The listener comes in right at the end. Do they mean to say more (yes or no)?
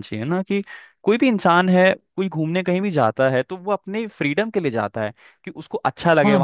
yes